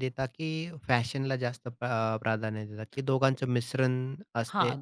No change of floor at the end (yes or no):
no